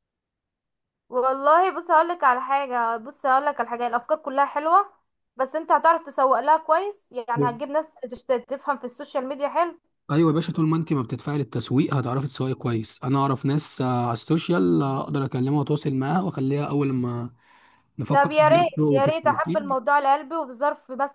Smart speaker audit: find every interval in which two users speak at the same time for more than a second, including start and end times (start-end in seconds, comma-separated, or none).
18.1-19.6